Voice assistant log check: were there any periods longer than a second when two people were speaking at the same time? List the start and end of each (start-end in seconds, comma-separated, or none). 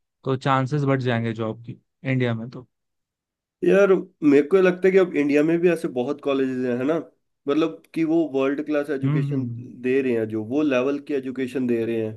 none